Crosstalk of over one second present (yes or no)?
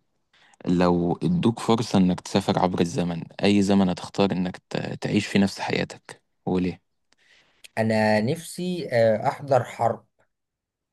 no